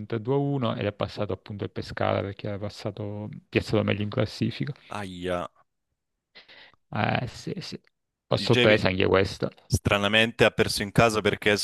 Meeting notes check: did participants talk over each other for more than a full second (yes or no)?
no